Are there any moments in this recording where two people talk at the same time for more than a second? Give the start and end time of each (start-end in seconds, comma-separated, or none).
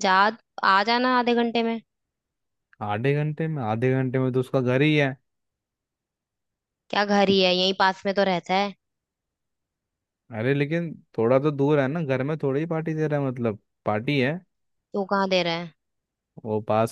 none